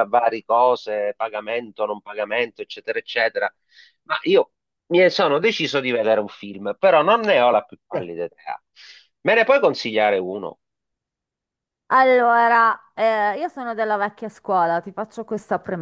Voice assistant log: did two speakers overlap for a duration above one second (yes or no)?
no